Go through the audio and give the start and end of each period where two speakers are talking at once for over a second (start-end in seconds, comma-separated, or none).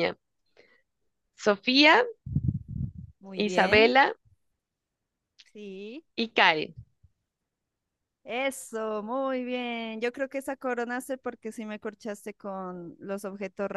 none